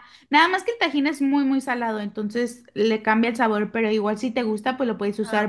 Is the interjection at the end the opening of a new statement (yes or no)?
no